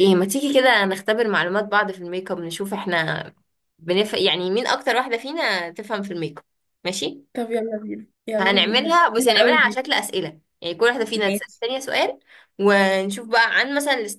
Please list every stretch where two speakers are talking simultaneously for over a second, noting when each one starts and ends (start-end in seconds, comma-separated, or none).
8.4-9.8